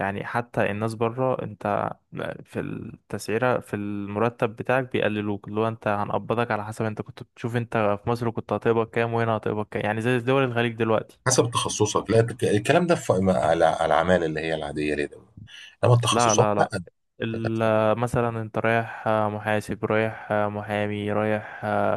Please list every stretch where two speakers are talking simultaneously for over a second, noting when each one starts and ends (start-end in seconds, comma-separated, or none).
none